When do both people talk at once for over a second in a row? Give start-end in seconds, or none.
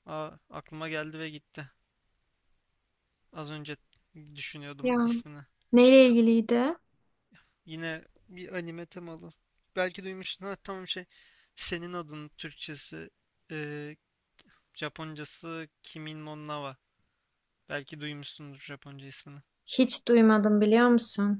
none